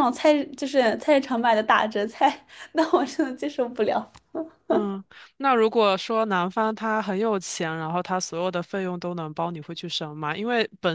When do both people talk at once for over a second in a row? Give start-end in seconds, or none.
none